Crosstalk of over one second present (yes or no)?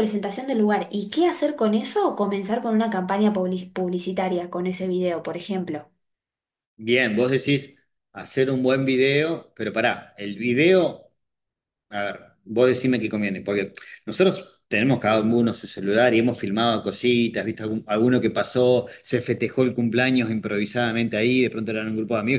no